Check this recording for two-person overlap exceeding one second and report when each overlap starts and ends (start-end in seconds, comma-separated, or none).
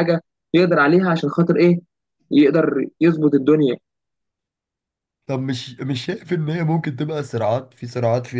none